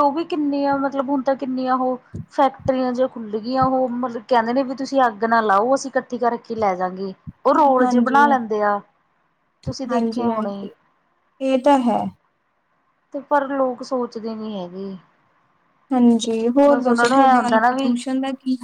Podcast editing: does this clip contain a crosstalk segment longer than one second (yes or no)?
yes